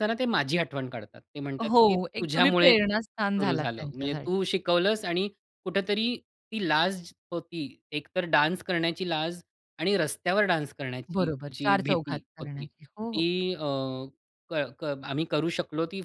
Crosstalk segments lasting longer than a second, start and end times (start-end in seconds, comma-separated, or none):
1.6-4.3, 11.1-13.3